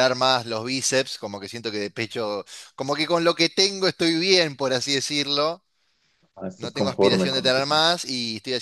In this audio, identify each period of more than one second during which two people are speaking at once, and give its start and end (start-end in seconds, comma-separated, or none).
6.6-7.8